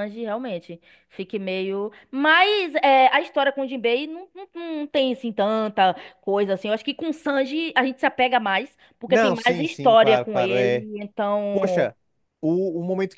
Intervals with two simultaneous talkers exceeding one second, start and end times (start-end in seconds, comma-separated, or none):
9.1-10.8